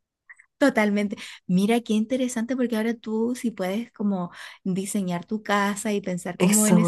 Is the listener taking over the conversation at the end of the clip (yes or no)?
yes